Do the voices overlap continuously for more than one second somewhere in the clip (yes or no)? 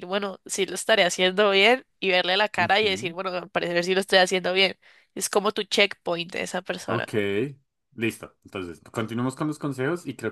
no